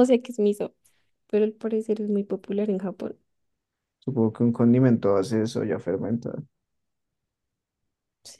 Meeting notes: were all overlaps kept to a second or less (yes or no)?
yes